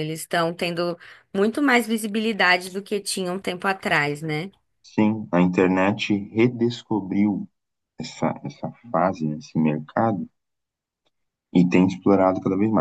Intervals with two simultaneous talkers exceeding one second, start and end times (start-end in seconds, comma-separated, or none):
none